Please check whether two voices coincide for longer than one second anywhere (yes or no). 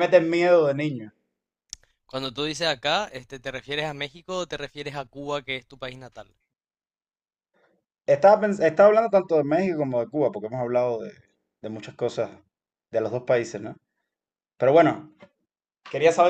no